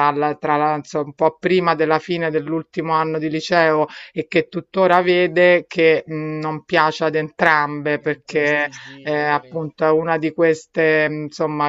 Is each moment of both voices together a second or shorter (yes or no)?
no